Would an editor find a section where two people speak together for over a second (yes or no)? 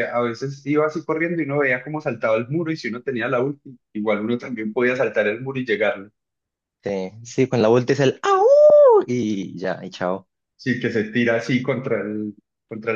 no